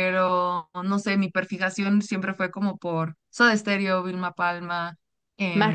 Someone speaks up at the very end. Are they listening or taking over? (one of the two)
listening